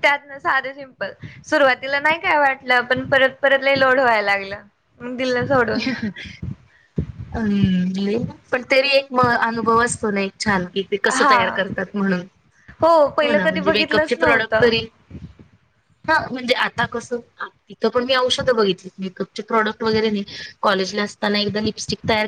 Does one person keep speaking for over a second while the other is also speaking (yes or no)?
yes